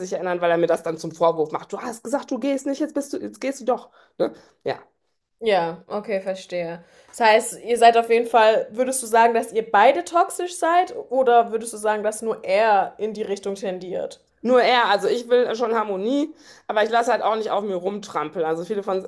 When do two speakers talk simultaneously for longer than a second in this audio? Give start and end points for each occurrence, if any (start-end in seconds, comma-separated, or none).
none